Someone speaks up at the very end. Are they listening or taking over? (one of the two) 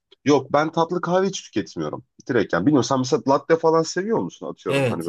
taking over